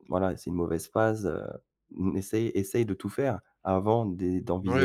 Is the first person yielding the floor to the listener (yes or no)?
no